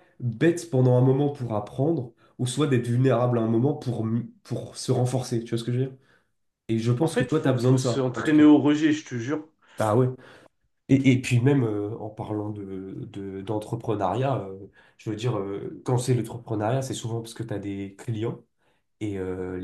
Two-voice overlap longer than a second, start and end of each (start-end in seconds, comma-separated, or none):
7.0-8.4